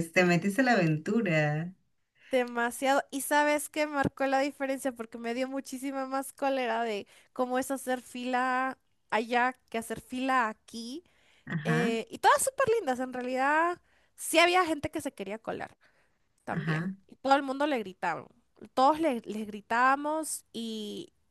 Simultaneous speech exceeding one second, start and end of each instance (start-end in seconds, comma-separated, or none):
none